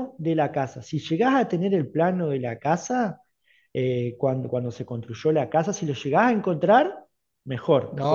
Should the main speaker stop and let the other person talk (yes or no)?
yes